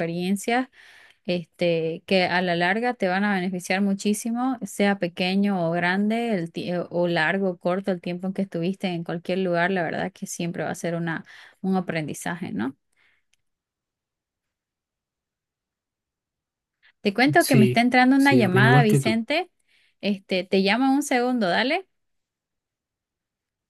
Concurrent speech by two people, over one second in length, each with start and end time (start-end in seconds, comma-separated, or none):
17.4-19.2